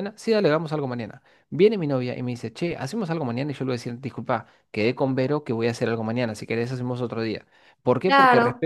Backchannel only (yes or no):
yes